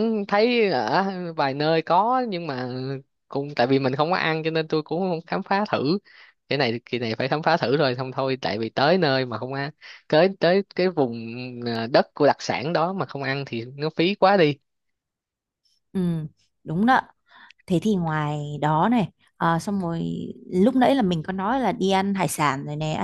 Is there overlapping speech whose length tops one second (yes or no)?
no